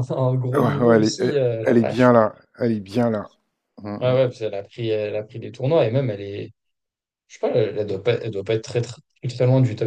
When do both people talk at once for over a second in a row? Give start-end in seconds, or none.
0.6-2.1